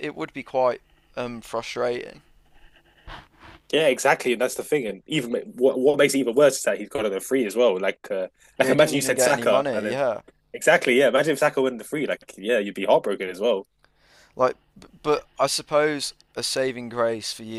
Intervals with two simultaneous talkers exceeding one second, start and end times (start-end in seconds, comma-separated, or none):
8.6-10.0